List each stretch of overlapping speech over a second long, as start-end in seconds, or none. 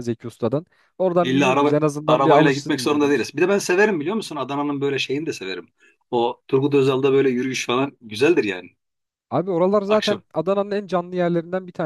1.2-3.3